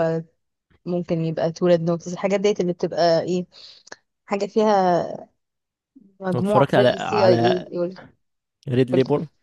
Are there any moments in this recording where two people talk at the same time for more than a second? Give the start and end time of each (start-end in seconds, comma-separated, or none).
6.3-7.7